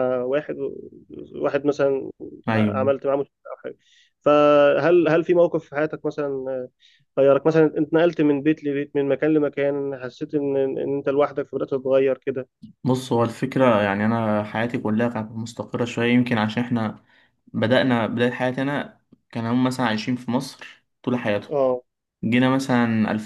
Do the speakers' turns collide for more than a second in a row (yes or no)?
no